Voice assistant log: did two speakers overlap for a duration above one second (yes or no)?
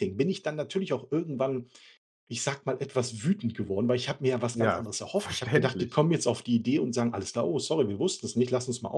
yes